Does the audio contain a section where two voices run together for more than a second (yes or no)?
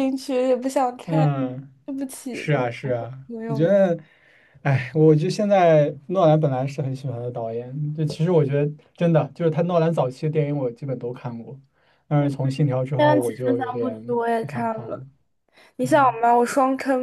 yes